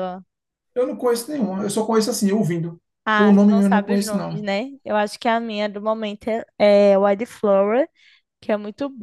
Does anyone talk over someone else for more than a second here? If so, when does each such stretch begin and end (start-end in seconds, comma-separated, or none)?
3.2-4.5